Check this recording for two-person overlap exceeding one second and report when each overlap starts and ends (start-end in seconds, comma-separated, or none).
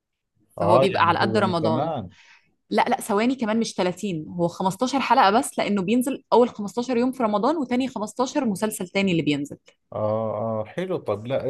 0.6-1.9